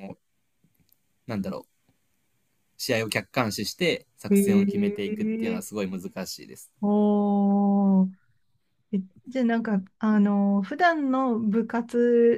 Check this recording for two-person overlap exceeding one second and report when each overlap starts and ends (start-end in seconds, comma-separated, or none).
4.3-5.6